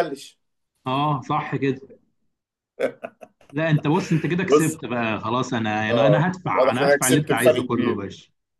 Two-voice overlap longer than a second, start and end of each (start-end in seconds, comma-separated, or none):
5.9-8.0